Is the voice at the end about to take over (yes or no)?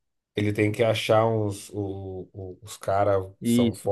no